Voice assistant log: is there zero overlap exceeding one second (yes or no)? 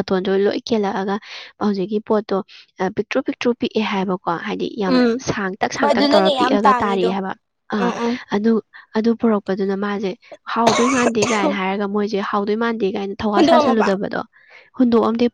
no